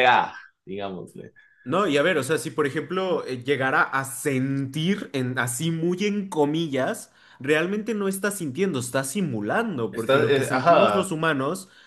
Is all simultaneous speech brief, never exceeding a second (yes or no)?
no